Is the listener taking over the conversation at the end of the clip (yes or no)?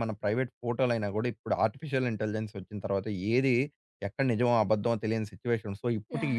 yes